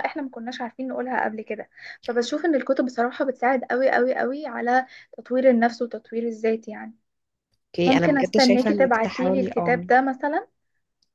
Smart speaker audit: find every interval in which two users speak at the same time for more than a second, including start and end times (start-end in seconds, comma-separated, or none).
7.8-9.9